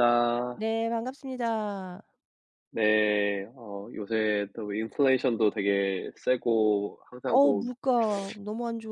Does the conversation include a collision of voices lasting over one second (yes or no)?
no